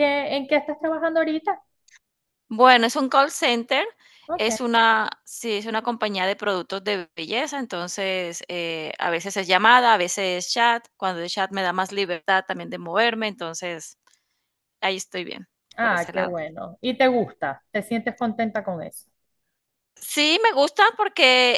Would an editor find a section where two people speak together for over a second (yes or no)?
no